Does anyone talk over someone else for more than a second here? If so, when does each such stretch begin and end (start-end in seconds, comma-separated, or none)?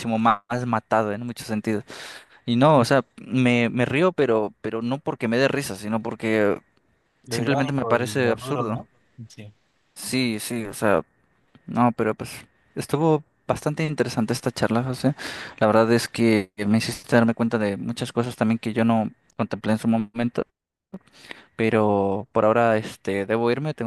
7.3-8.8